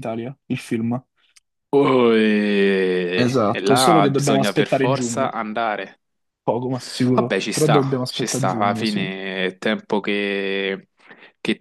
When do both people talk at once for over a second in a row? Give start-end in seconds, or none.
3.1-5.3, 7.1-9.1